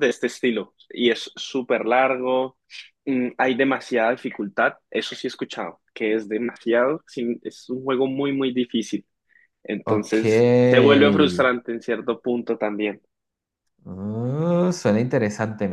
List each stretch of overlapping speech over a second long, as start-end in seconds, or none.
none